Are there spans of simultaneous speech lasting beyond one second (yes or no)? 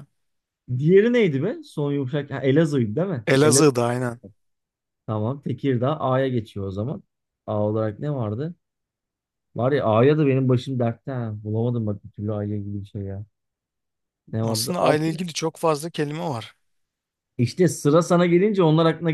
no